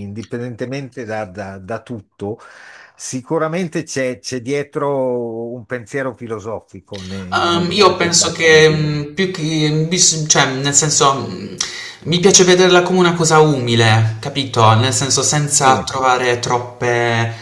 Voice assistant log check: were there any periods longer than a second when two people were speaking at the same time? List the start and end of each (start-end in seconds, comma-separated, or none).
7.3-8.9